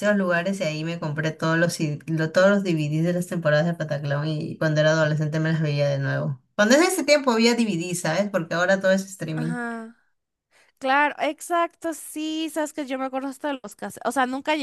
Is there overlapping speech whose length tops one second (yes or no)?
no